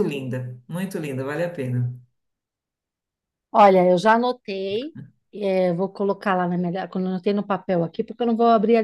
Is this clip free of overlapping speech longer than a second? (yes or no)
yes